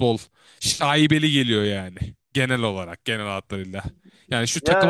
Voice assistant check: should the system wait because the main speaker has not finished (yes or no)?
yes